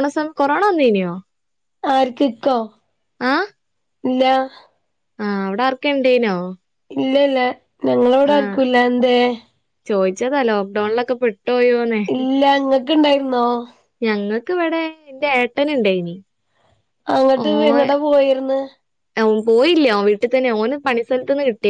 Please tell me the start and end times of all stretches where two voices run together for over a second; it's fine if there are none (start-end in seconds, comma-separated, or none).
none